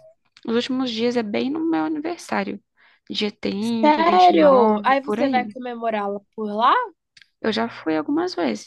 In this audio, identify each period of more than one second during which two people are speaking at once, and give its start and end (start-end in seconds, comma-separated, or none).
3.8-5.5